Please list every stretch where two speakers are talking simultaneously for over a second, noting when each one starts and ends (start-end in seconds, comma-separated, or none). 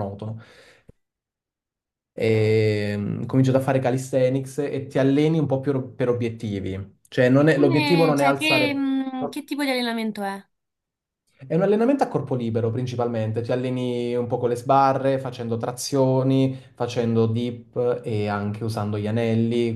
7.4-8.8